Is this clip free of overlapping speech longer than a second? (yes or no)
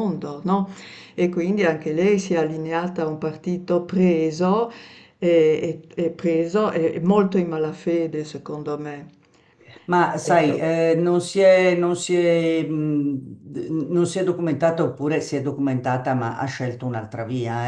yes